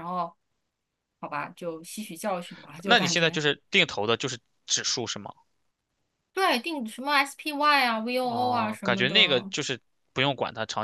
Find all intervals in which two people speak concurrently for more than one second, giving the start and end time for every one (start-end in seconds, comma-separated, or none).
8.2-9.5